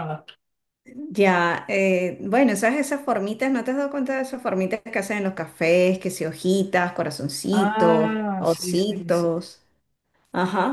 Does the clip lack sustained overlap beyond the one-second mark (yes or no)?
no